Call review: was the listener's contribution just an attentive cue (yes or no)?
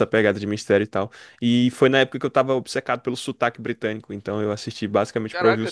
no